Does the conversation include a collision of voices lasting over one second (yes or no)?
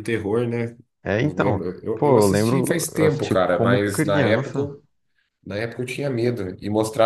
yes